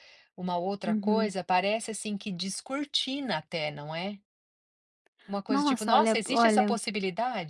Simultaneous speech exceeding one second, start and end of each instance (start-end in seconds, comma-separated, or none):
5.5-6.8